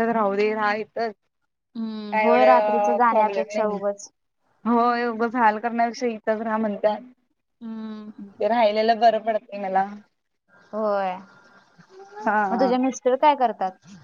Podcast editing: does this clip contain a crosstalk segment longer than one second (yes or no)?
yes